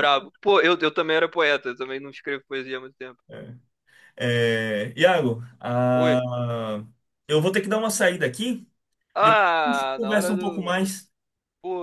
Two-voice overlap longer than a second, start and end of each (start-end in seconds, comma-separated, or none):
9.2-10.7